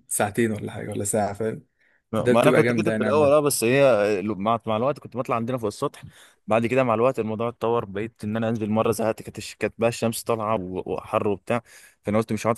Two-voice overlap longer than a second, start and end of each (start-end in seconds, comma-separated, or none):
2.2-3.4